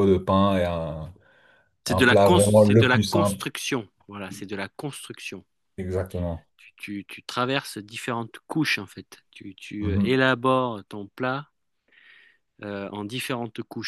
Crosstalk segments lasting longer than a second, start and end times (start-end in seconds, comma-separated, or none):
1.9-3.4